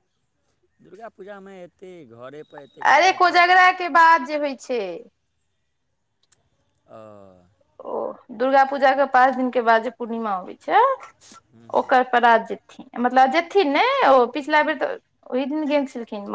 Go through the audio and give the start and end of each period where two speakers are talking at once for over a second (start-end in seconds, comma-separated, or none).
none